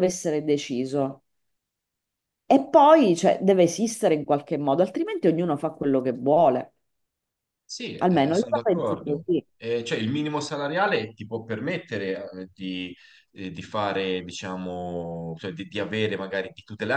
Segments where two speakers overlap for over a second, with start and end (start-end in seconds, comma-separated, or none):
8.0-9.4